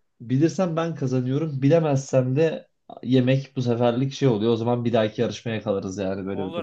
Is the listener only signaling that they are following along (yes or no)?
no